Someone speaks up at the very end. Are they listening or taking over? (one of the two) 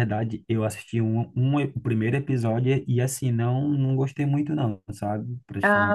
taking over